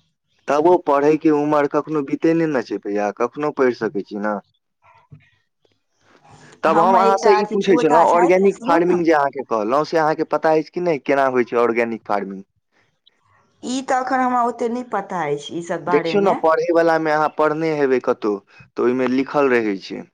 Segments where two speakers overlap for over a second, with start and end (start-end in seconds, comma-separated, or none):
6.7-9.0